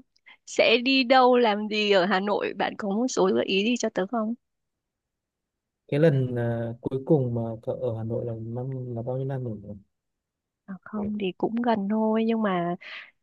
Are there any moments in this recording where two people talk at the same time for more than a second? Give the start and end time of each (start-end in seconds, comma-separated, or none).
none